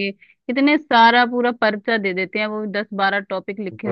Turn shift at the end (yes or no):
no